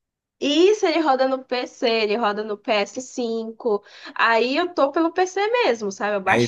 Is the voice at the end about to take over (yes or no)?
yes